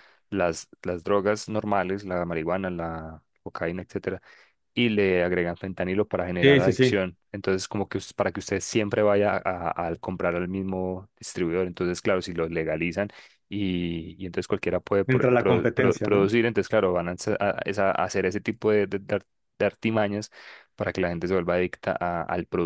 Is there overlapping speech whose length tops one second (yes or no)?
yes